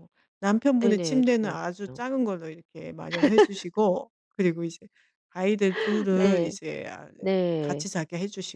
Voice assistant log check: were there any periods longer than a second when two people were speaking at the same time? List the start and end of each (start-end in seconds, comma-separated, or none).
0.8-2.0